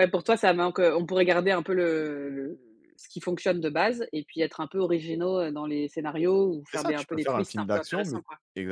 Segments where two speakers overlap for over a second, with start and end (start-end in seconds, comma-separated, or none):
6.7-8.2